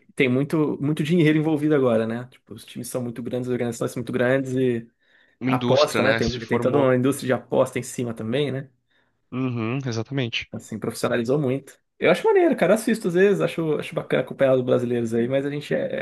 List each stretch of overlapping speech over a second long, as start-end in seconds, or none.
5.5-7.0